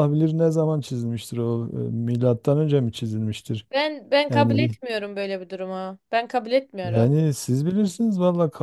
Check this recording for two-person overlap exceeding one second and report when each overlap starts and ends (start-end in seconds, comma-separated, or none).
none